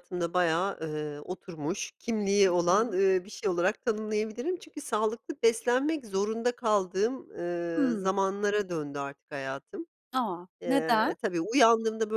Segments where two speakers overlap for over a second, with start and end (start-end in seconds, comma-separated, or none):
none